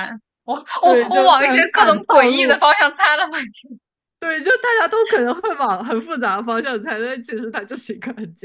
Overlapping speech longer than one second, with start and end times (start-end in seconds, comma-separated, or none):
0.8-2.6